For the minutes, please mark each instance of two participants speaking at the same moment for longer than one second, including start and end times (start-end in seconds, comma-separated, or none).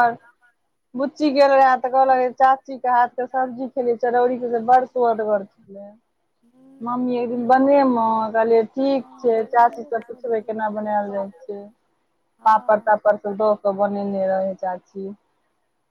9.0-10.9